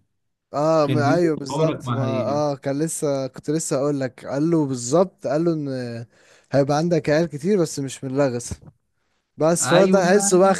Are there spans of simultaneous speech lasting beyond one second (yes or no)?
yes